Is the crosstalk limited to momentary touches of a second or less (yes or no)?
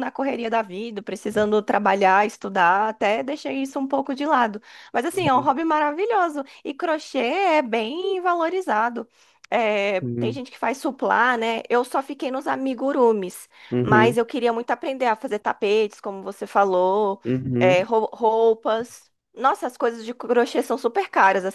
yes